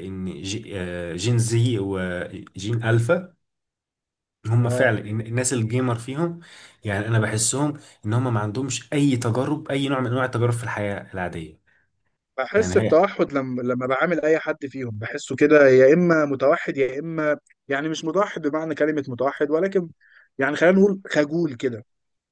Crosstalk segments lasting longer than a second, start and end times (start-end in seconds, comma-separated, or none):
none